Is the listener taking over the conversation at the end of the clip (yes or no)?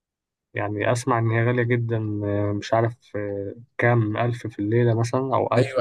yes